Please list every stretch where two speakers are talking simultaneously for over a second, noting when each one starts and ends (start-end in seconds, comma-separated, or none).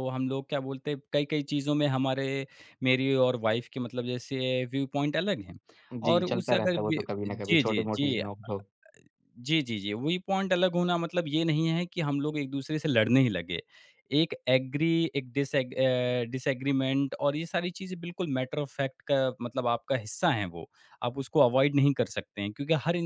6.1-8.2